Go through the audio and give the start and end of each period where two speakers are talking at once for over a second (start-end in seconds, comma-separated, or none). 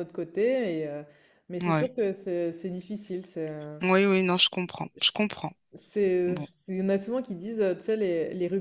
none